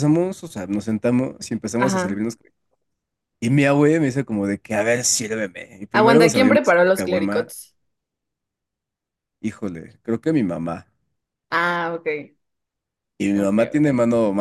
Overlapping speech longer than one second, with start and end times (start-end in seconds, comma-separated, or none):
5.9-7.5